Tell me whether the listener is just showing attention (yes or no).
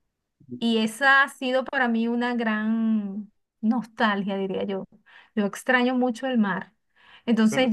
yes